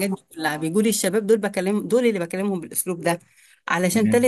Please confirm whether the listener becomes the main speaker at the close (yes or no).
no